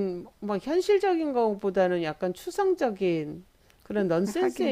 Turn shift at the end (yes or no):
no